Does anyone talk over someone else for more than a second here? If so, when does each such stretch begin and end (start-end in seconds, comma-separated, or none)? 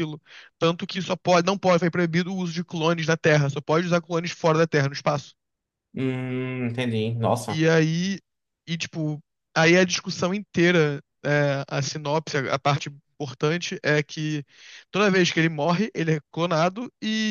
none